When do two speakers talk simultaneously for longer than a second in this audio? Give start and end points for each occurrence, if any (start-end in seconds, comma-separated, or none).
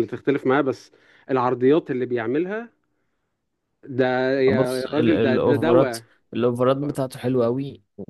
4.5-6.0